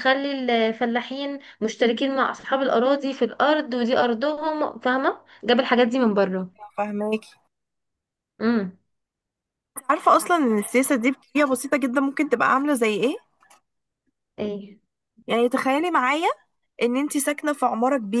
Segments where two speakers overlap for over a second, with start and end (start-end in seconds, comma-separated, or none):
none